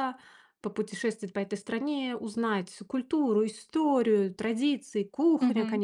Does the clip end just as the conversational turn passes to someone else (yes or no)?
yes